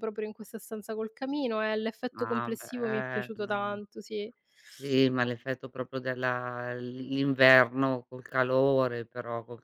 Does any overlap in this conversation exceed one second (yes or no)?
yes